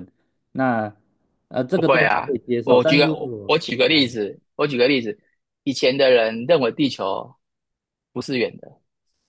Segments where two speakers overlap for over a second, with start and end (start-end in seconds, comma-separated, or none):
1.7-3.5